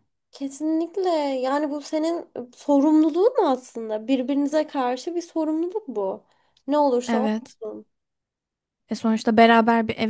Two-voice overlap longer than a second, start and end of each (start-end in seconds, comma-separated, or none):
none